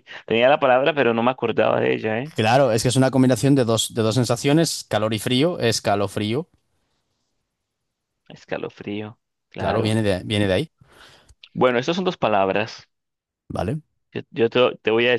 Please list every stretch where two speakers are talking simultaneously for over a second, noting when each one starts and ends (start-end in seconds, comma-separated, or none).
none